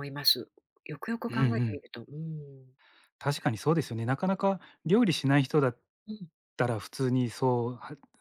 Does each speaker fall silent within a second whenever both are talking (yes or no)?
yes